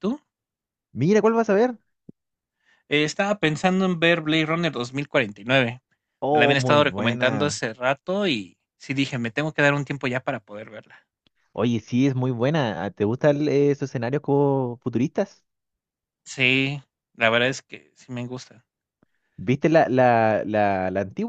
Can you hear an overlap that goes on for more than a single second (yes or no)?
yes